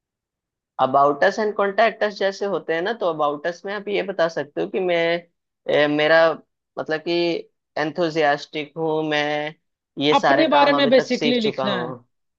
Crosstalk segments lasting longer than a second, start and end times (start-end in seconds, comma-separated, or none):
10.2-11.9